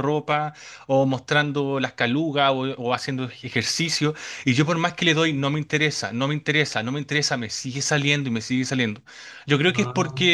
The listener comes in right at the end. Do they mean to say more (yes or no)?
no